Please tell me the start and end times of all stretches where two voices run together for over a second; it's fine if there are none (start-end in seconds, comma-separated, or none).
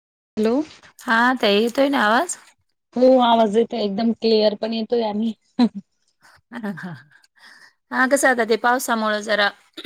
none